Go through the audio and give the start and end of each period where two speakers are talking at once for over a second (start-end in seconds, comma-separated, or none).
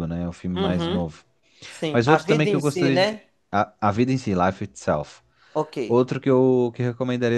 1.9-3.1